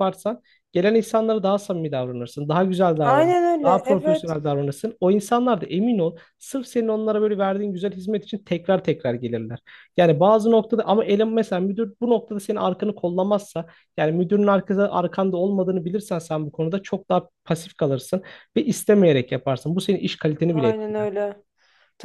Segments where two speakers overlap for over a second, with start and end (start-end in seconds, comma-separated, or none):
3.0-4.3